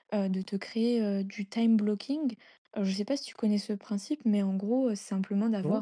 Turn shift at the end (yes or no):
no